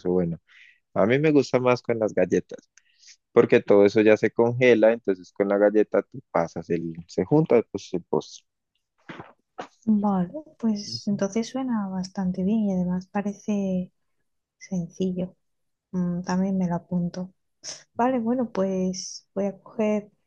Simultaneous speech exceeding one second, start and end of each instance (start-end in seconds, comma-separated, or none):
none